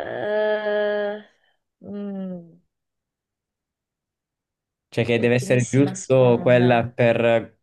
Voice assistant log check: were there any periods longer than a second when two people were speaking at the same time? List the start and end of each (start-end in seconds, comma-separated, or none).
5.2-6.9